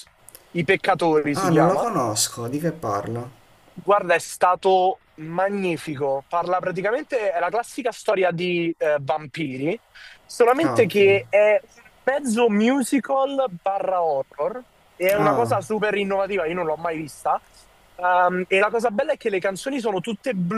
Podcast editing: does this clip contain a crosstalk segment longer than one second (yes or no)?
no